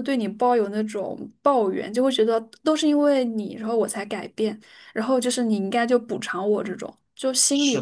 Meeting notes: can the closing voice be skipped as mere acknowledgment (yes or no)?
no